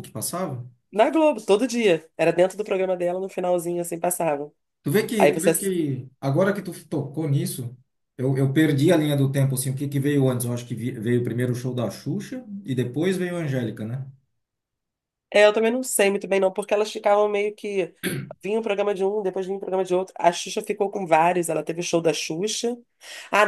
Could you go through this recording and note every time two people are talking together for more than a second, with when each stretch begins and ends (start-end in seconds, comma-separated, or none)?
none